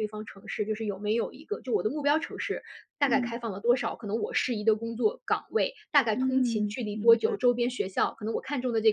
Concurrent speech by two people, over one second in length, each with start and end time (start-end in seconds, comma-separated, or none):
6.1-7.4